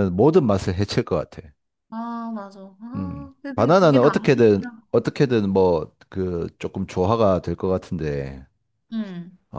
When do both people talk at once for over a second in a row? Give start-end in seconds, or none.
3.0-4.9